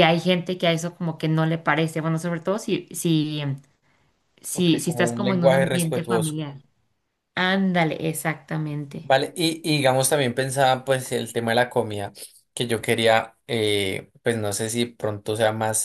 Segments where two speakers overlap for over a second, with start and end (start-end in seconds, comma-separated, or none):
4.5-6.4